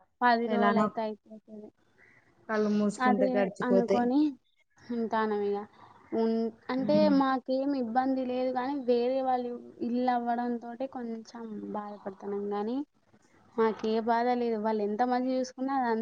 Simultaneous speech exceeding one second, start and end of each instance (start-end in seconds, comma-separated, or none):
none